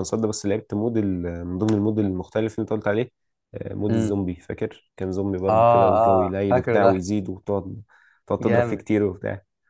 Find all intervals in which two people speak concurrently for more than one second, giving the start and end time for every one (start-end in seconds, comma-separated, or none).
5.5-7.1